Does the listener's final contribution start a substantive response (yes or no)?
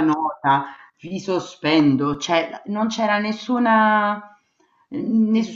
no